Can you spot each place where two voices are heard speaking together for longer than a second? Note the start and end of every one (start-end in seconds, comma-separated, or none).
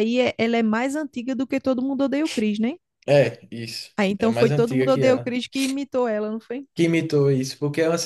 4.0-5.3